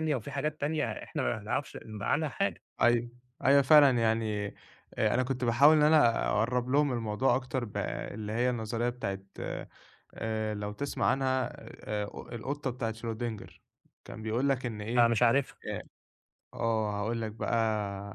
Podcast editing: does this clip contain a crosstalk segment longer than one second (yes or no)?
no